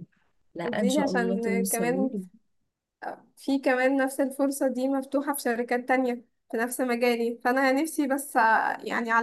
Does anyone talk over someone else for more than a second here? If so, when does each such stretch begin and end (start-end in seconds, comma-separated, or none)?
0.7-2.1